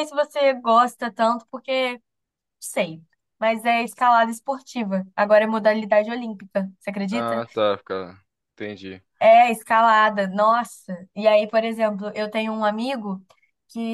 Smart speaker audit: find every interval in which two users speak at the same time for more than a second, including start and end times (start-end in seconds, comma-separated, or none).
none